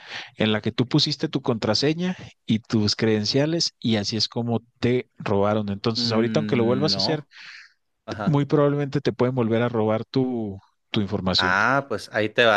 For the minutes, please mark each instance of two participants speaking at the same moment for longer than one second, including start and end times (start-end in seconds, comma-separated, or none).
6.0-7.2